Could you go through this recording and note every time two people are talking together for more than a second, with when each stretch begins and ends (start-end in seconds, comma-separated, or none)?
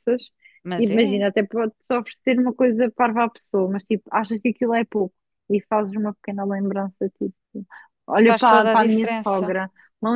8.2-9.6